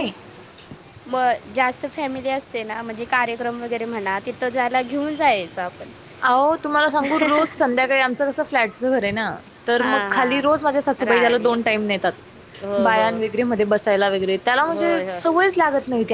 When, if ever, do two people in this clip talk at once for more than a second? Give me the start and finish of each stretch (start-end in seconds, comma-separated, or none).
9.8-11.5